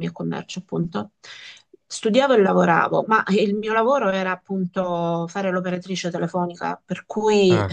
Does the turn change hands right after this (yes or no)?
no